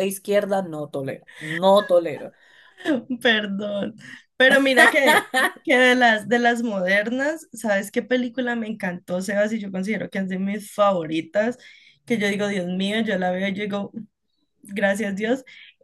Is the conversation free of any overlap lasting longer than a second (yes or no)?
yes